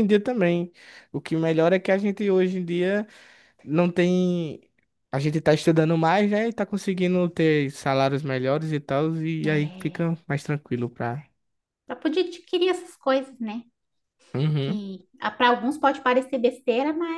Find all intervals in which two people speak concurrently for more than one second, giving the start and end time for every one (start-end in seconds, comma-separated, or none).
none